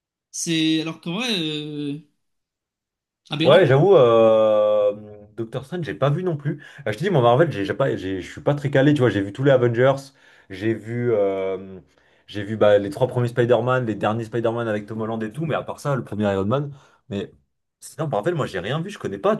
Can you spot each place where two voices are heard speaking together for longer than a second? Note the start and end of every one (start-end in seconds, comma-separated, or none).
none